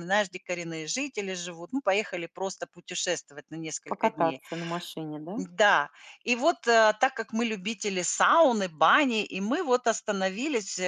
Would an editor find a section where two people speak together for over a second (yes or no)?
no